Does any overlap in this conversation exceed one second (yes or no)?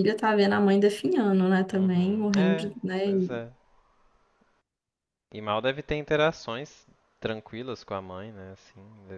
yes